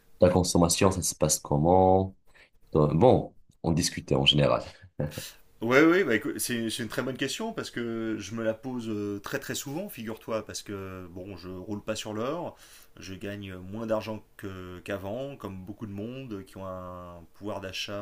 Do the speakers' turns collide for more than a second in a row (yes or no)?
no